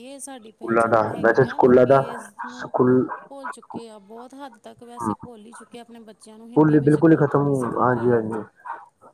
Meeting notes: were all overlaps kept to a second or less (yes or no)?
no